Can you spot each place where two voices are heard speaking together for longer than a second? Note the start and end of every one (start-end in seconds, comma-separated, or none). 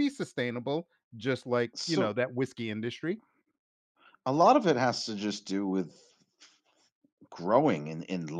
none